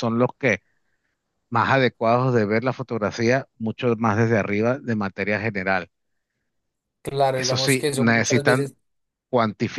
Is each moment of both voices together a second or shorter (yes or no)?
no